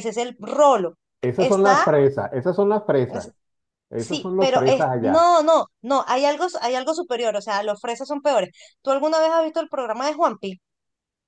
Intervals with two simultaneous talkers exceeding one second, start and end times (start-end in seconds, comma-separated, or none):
4.0-5.3